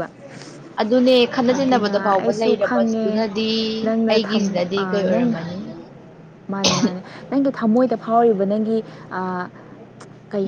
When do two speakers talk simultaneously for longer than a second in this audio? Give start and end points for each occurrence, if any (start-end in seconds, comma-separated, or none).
1.5-3.1